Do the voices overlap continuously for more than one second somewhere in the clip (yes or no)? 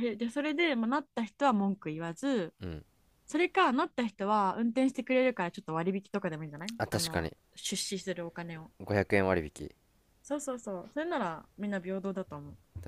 no